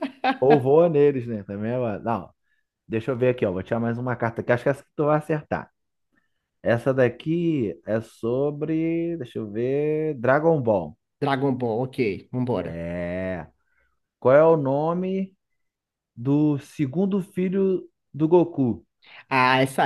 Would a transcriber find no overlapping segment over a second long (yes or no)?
yes